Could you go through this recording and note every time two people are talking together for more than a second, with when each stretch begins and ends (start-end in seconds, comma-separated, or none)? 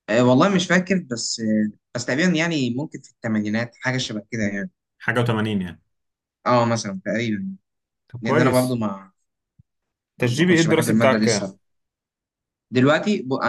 10.2-11.5